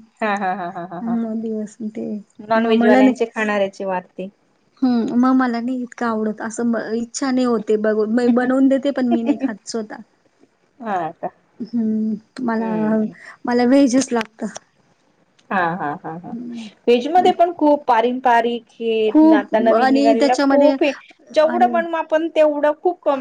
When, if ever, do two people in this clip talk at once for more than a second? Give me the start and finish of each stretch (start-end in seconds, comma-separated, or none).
19.3-20.7